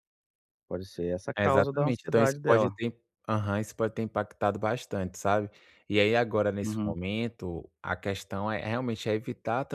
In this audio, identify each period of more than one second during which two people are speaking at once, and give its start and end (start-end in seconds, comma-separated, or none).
1.4-2.7